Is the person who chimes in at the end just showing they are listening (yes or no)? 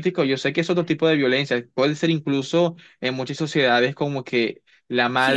no